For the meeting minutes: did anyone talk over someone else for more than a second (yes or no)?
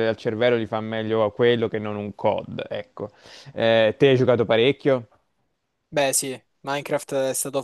no